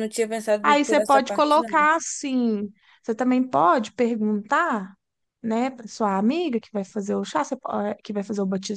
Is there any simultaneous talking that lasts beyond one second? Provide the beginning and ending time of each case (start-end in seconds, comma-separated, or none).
0.6-1.9